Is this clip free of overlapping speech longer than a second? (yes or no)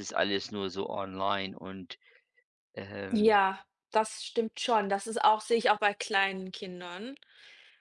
yes